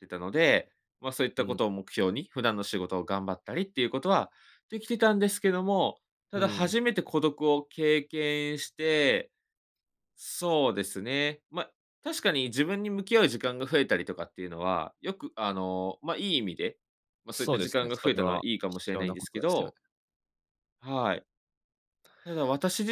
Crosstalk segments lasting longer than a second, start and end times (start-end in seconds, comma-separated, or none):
17.3-19.7